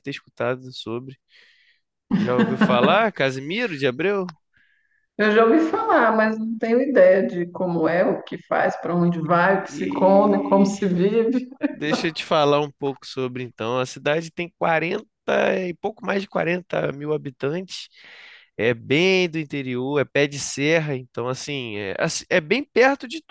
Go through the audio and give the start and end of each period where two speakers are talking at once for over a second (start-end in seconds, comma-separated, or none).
9.3-10.7